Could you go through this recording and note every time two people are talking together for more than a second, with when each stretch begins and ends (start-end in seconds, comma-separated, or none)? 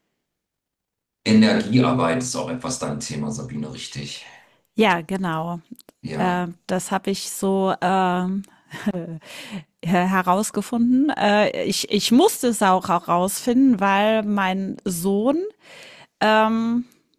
none